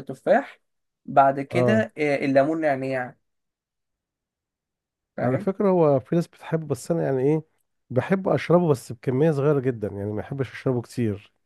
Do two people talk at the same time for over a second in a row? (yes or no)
no